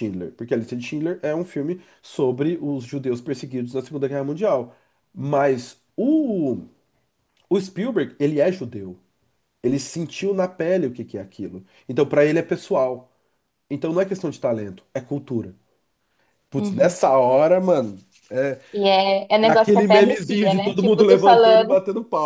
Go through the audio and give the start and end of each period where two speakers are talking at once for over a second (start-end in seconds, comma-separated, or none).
19.4-21.8